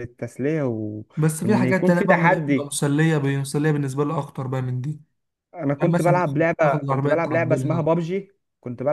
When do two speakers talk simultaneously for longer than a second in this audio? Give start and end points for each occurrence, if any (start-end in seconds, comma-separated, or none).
1.4-2.7, 5.8-7.9